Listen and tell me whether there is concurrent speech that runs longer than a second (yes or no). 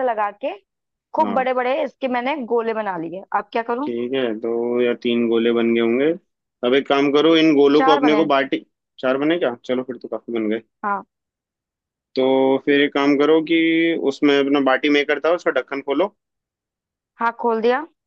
no